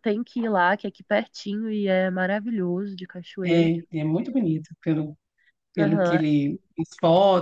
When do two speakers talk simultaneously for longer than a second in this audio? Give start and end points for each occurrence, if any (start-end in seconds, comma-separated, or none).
none